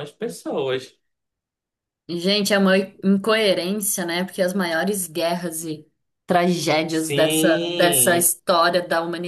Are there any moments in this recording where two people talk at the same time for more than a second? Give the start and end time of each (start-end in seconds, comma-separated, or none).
6.9-8.3